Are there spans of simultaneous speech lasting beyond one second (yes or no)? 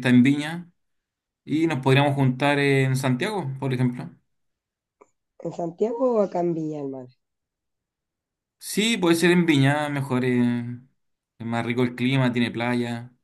no